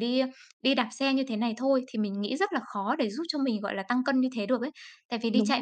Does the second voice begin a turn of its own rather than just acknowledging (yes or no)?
no